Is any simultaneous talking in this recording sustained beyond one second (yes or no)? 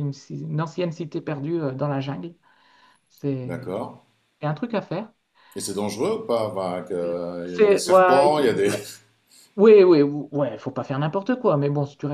yes